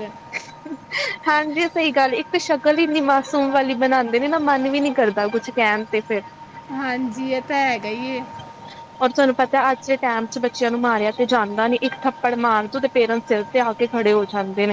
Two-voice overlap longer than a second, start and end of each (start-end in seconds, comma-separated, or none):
none